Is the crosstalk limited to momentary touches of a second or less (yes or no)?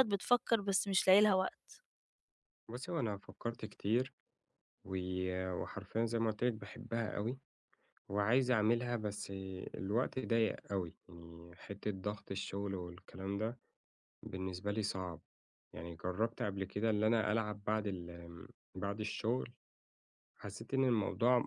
yes